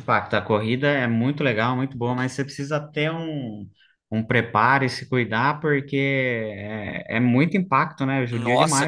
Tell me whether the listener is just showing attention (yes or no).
no